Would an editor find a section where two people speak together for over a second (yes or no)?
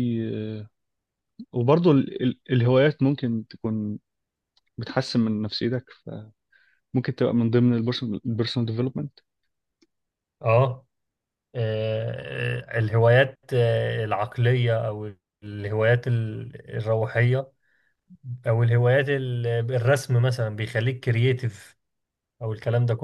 no